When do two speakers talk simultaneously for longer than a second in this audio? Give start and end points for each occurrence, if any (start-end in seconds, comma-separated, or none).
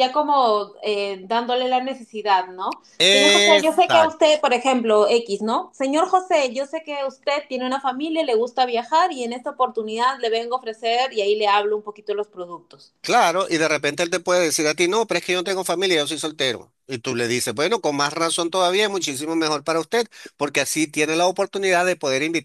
3.0-4.2